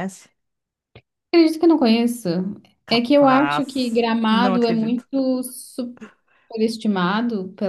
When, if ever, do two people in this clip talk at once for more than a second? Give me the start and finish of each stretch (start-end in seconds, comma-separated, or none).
2.9-5.1